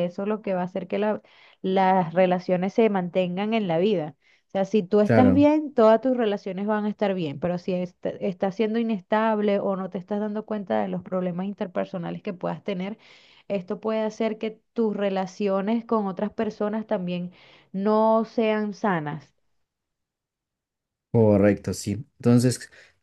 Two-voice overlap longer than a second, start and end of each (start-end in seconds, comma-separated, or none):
none